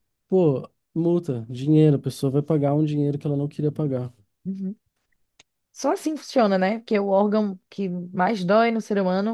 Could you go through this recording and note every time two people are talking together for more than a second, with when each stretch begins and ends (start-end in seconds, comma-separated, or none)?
none